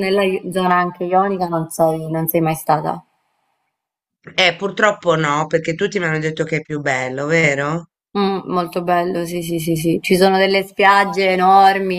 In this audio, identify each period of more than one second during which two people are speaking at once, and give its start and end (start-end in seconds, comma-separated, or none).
none